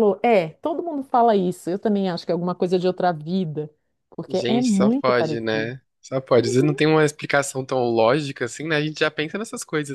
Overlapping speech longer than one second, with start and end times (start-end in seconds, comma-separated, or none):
4.3-5.7